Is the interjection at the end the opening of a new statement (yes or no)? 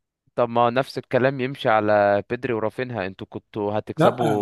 no